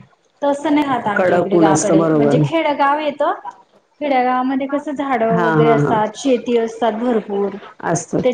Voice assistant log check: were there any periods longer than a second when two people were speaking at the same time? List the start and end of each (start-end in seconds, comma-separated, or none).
1.1-2.4